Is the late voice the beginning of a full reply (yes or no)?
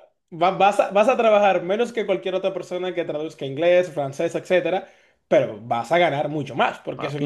no